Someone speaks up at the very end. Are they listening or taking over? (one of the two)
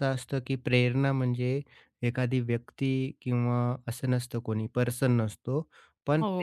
taking over